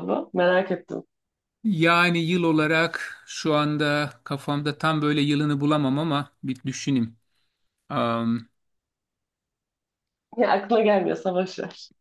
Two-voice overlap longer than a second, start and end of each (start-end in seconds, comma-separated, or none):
none